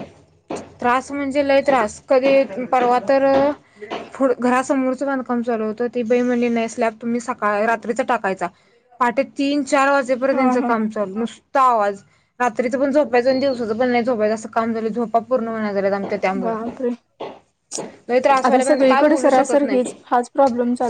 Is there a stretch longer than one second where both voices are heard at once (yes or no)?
yes